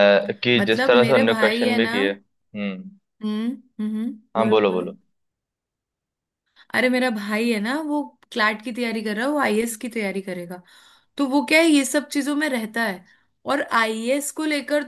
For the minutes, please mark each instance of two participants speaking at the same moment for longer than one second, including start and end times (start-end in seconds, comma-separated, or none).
0.6-2.0